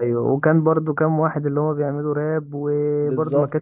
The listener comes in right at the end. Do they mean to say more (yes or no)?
no